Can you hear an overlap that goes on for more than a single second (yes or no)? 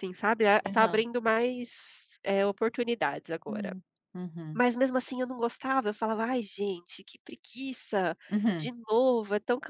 no